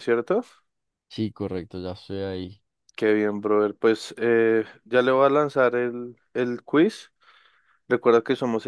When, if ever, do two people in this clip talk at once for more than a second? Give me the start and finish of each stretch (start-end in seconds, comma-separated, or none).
none